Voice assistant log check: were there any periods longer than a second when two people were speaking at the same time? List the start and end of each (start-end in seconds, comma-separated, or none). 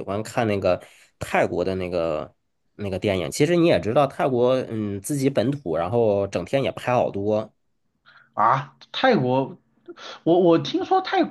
none